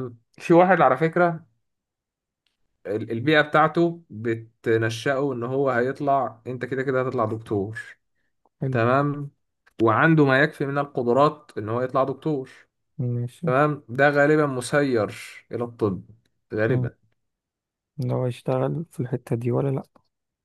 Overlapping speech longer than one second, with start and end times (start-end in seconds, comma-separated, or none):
none